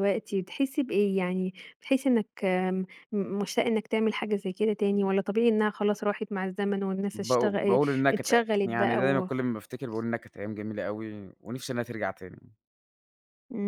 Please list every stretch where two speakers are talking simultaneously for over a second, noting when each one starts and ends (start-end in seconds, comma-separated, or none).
7.1-9.3